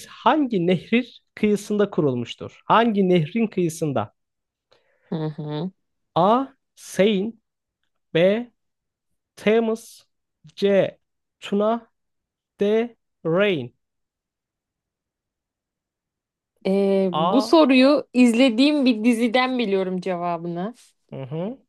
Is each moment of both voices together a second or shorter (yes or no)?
yes